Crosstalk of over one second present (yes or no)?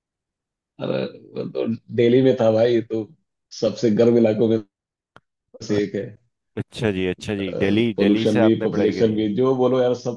yes